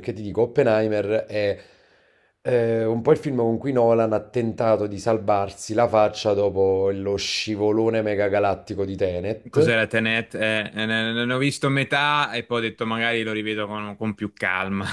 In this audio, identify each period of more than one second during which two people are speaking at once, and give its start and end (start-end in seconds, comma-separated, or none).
none